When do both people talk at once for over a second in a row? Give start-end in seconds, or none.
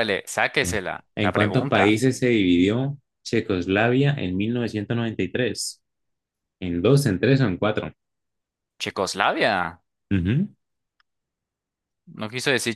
0.6-2.0